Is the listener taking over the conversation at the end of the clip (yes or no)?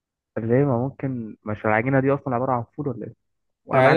yes